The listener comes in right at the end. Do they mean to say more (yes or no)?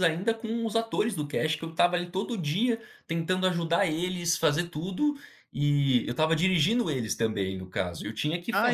yes